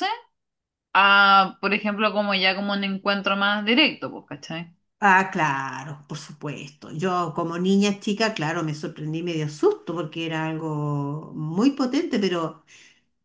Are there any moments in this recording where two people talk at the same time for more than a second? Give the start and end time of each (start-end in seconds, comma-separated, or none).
none